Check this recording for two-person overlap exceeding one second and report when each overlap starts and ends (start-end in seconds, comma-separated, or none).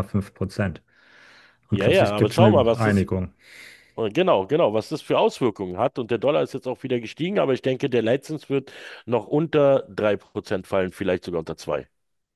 1.7-3.1